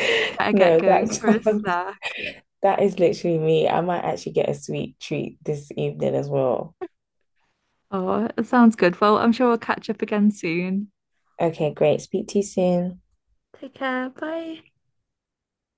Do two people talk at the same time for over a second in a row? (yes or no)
yes